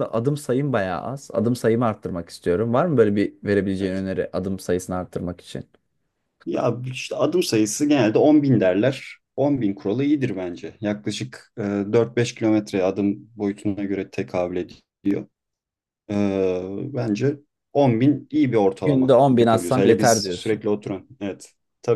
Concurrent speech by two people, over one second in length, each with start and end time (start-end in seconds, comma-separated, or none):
18.8-20.6